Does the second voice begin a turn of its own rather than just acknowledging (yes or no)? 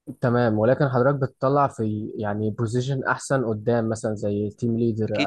yes